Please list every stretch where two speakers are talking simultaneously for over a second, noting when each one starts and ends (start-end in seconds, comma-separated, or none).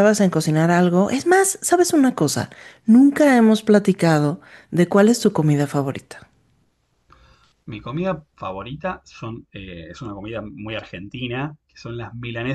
none